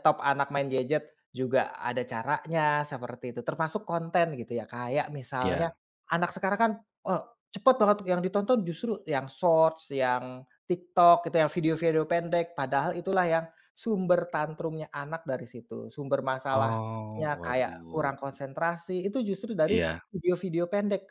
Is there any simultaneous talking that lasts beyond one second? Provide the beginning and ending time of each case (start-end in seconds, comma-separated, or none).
16.5-18.1